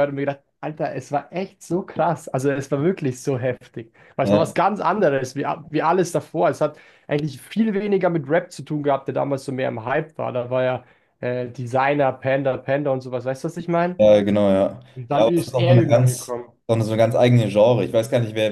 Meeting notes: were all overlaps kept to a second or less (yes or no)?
no